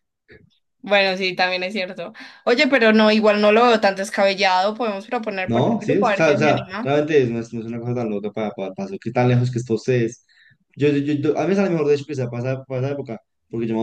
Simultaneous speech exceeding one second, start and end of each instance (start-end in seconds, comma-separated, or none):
5.5-7.0